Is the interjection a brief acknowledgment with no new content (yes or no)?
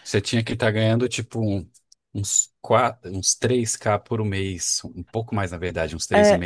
no